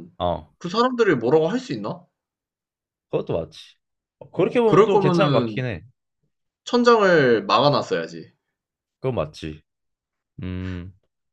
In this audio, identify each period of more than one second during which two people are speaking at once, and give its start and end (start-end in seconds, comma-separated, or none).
4.3-5.7